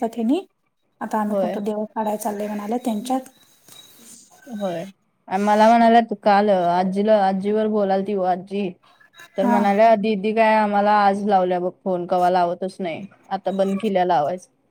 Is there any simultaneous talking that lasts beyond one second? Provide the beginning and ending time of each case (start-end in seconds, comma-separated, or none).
none